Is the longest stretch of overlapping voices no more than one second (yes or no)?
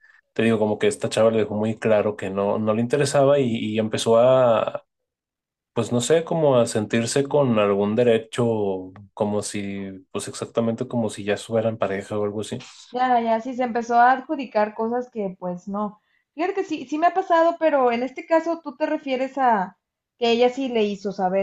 yes